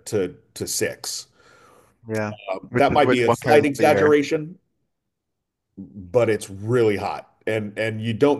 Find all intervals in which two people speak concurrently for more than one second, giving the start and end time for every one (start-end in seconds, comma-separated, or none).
2.7-4.1